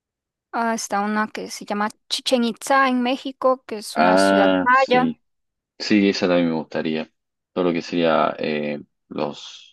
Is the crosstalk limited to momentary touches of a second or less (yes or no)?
no